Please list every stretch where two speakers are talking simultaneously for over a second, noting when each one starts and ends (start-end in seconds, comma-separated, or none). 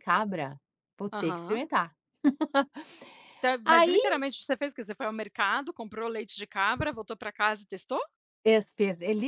none